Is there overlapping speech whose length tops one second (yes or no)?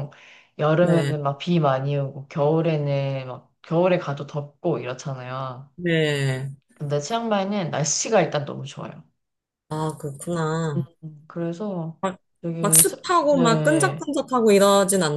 yes